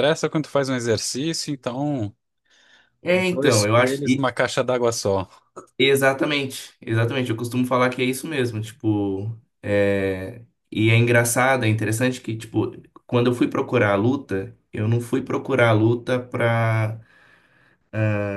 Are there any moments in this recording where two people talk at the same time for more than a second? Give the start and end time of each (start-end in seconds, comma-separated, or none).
3.1-4.3